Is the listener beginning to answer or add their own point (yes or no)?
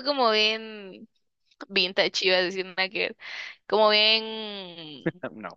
no